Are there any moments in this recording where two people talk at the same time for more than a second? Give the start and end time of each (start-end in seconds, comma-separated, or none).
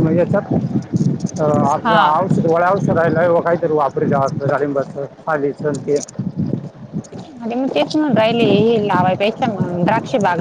none